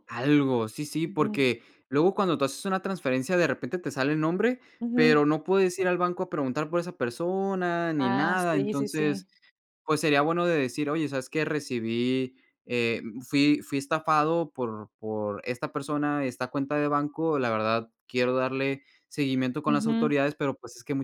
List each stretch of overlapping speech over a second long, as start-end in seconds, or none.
8.0-9.3